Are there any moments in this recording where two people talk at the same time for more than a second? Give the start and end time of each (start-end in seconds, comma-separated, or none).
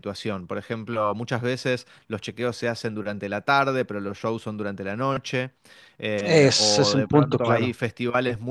6.2-7.8